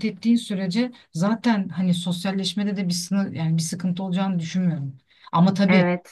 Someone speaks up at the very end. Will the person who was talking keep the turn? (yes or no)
yes